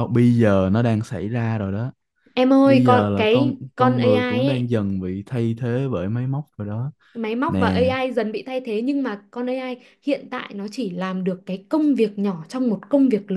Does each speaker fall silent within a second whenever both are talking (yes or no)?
no